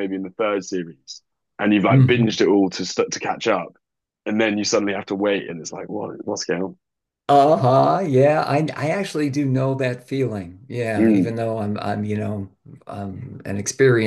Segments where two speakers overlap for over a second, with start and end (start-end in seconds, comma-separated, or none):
none